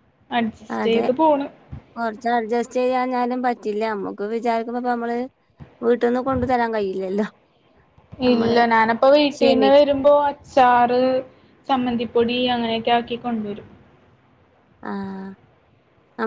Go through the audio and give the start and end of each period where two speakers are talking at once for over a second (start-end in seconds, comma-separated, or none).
none